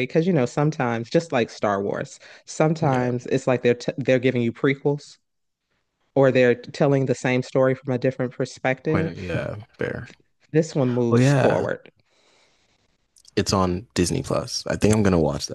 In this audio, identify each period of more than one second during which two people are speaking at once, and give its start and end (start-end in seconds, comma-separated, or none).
none